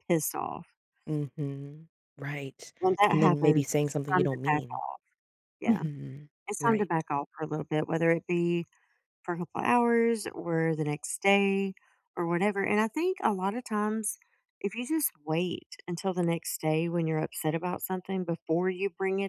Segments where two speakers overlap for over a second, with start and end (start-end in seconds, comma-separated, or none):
3.1-4.8